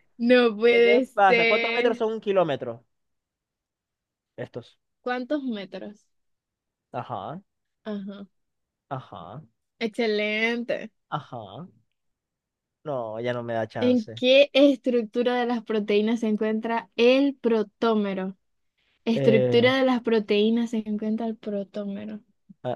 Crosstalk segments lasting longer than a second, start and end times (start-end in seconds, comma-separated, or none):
0.6-2.0